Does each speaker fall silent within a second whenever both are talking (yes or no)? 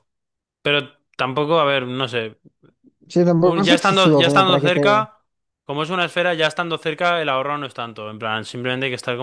no